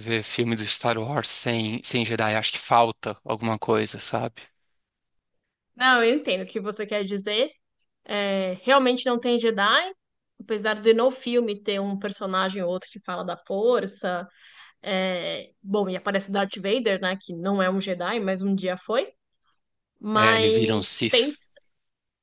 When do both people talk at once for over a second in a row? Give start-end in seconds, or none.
20.1-21.4